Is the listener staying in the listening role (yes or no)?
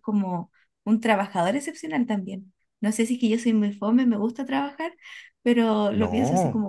yes